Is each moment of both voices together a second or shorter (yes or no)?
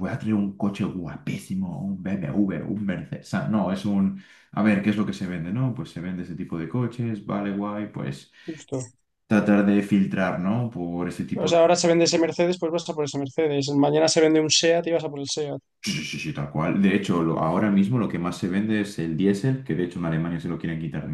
yes